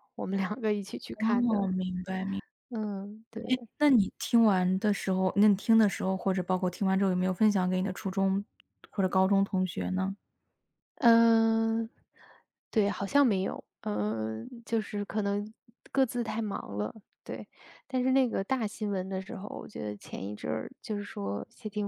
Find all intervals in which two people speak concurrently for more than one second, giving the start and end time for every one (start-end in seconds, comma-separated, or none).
none